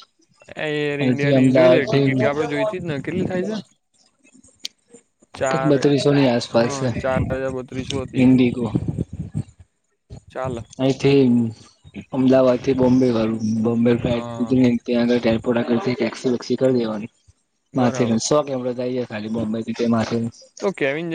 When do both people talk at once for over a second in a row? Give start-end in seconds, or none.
1.0-2.5